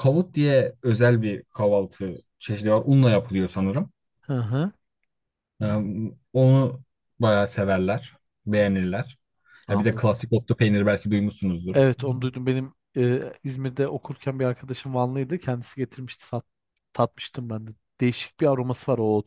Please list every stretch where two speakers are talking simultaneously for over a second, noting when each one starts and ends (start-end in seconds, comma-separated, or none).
none